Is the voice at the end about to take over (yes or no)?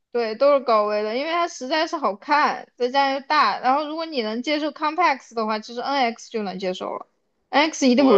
yes